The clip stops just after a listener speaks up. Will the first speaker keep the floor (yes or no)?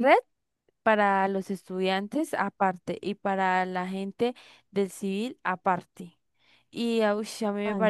yes